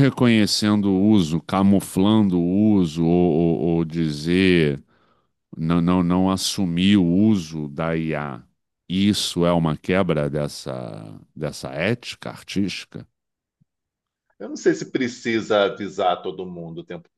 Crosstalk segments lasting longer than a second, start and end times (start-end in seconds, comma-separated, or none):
none